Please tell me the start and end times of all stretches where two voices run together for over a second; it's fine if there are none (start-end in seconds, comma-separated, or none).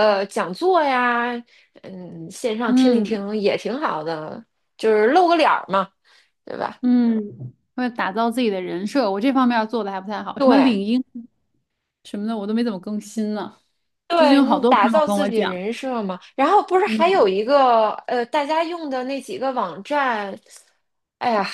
14.1-15.6